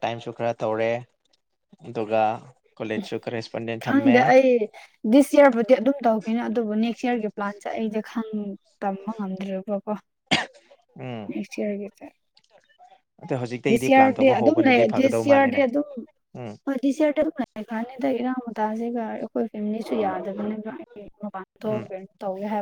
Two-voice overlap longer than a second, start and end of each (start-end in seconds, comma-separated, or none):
13.7-15.6